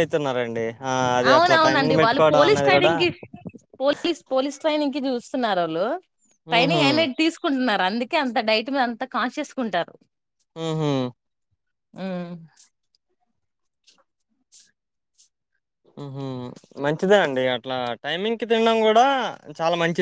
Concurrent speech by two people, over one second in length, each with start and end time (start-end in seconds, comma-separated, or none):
1.3-2.9